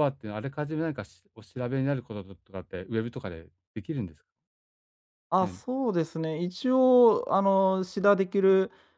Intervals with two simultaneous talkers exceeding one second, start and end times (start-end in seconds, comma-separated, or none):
none